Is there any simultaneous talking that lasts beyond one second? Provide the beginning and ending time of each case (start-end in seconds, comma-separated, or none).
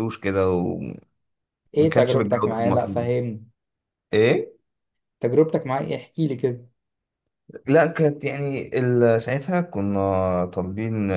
1.9-3.1